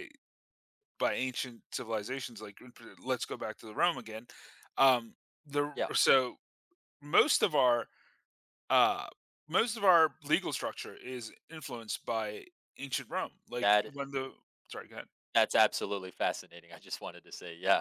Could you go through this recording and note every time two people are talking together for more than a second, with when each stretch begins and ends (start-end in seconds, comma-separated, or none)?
none